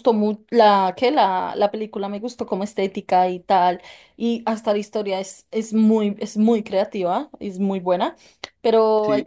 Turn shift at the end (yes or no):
no